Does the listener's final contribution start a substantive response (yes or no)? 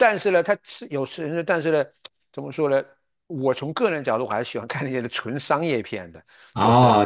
yes